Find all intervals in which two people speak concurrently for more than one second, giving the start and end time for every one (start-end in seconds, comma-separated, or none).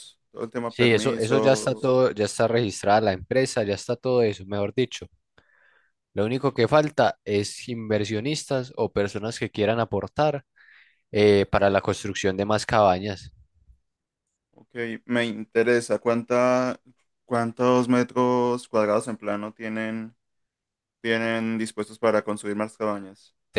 0.7-1.9